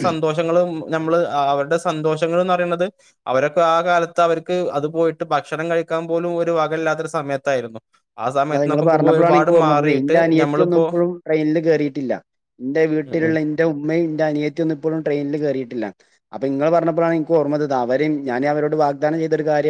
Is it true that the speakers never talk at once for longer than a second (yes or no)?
no